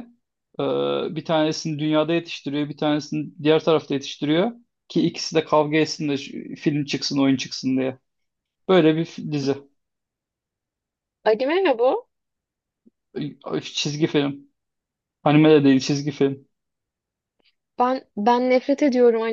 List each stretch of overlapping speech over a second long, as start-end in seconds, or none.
none